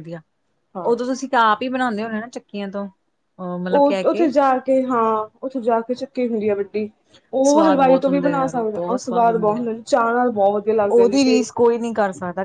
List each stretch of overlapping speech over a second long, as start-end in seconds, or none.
7.5-9.7